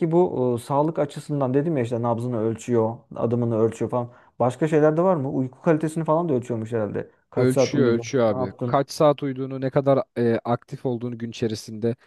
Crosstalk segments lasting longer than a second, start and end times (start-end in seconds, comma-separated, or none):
7.3-8.8